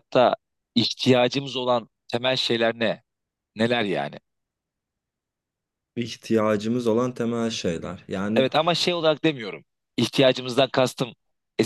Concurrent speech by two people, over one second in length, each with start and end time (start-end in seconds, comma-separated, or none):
none